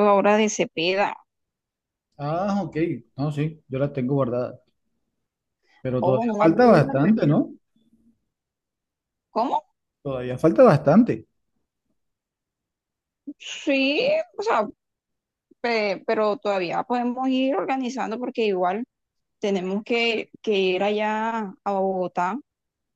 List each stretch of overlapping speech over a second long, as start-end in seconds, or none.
6.0-7.5